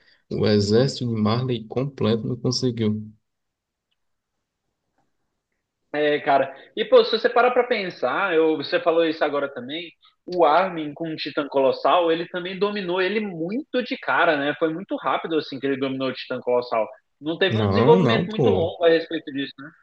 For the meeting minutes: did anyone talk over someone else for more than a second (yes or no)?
yes